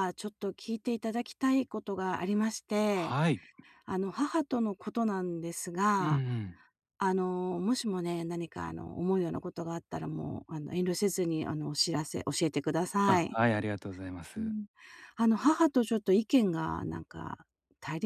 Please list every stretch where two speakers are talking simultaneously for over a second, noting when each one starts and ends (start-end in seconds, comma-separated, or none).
none